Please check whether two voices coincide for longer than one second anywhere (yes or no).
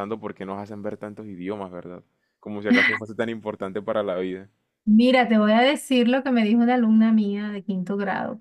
no